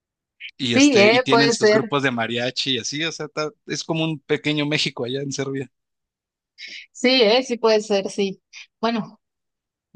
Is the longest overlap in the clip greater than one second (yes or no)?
yes